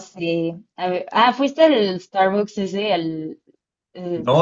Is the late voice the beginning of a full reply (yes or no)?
yes